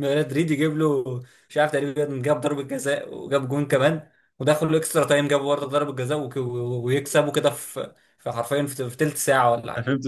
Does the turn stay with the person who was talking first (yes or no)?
no